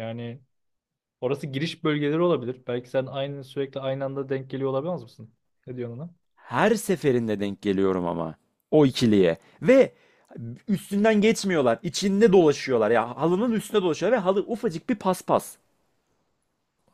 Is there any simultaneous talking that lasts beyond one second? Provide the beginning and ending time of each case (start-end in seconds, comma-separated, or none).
none